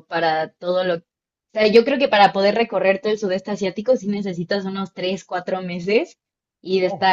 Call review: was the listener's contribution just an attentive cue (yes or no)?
yes